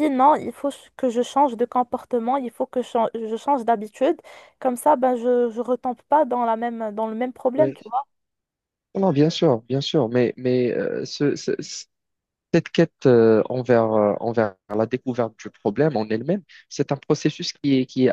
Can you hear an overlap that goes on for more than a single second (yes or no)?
no